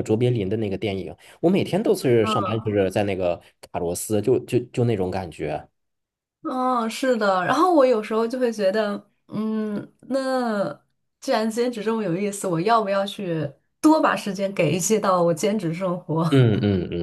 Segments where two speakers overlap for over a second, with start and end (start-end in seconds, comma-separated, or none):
none